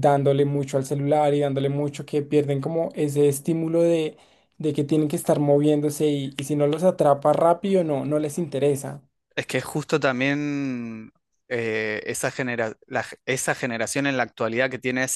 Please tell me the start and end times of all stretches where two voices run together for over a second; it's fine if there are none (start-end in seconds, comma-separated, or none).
none